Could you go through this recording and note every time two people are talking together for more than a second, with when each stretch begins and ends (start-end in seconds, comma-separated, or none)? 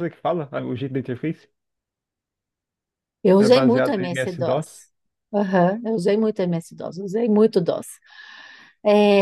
3.4-4.8